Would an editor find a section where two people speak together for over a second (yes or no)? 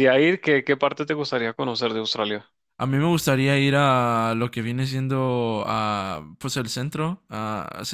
no